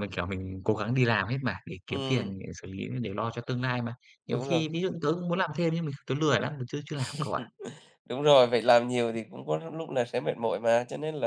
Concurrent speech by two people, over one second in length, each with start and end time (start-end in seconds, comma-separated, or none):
none